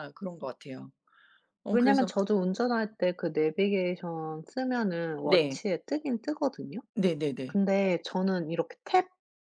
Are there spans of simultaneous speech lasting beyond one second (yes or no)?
no